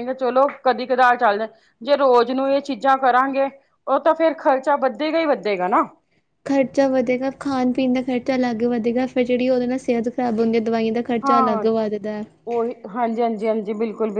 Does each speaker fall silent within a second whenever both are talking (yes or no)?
yes